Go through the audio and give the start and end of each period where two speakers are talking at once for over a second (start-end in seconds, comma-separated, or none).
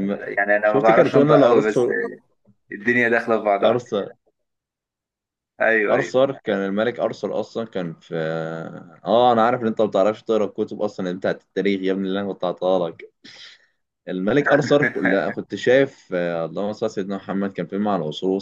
0.6-1.8